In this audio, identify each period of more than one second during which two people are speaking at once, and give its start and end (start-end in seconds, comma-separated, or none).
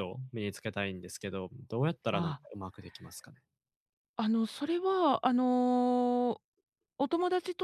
none